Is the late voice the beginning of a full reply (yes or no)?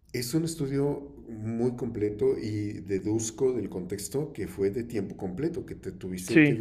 no